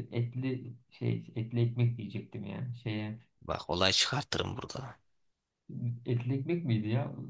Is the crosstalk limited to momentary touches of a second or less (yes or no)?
yes